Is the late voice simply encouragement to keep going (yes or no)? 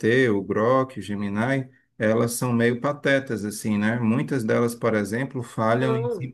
yes